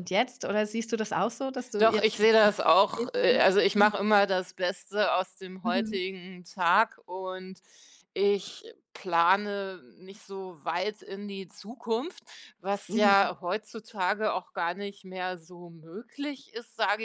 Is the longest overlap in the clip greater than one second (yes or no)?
yes